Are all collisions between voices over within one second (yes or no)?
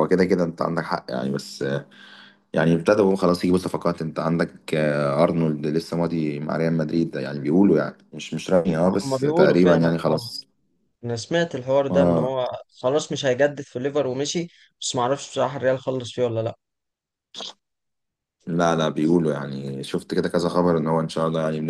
no